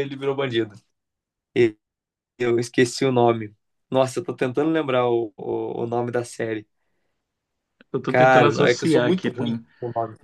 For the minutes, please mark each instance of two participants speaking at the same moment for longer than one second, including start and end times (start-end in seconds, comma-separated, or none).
8.1-9.7